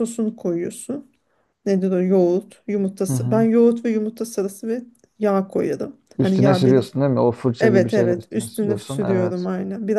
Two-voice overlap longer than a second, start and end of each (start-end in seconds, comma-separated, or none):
7.6-9.5